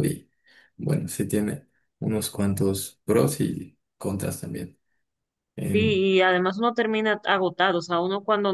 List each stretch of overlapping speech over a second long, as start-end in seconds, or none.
none